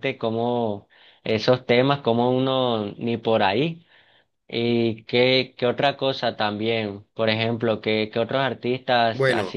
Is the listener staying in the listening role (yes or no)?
no